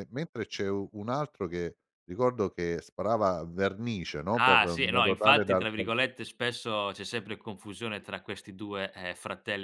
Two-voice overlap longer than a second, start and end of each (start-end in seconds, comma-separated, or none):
4.4-5.9